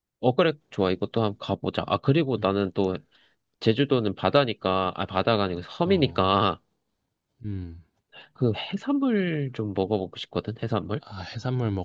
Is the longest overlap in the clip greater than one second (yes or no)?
no